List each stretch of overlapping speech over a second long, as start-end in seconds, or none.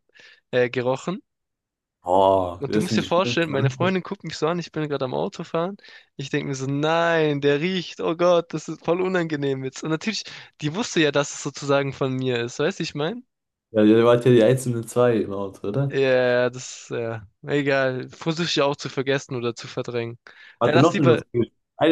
2.6-4.0